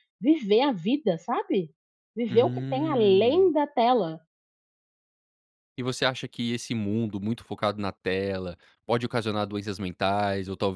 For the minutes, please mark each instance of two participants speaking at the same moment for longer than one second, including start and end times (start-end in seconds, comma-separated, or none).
2.3-3.5